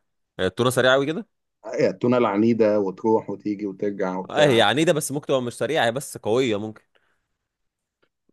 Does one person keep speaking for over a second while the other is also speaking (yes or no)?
no